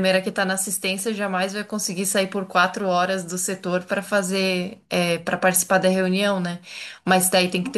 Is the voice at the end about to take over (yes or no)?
no